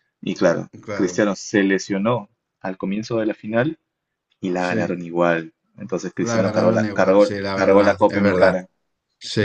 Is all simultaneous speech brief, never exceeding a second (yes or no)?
no